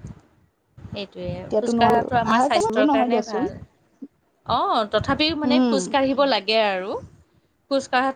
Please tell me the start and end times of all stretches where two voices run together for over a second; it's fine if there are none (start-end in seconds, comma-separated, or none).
1.4-3.5